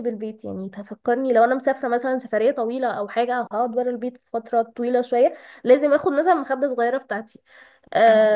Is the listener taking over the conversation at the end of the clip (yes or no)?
no